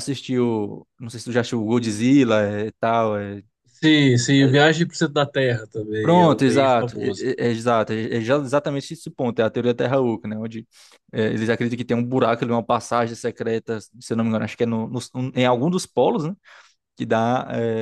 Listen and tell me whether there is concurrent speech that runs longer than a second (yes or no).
yes